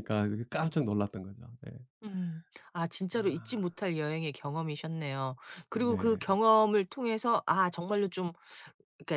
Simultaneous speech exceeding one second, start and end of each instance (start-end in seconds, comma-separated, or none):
none